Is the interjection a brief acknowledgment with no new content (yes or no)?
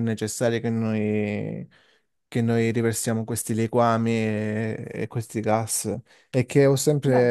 yes